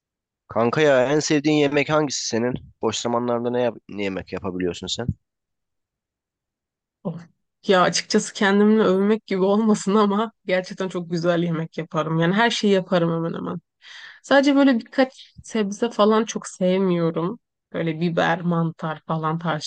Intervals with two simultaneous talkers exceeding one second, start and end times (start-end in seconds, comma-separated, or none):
none